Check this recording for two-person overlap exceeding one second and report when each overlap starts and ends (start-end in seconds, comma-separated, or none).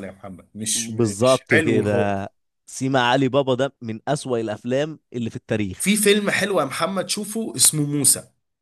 0.8-2.3